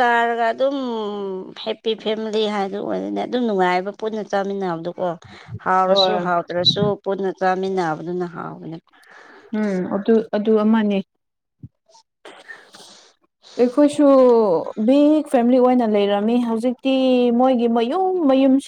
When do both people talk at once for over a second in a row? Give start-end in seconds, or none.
none